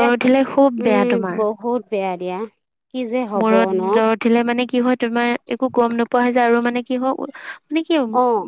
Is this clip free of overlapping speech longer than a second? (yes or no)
yes